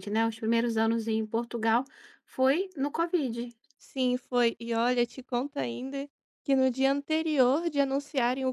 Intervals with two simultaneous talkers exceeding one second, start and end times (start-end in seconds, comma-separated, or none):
none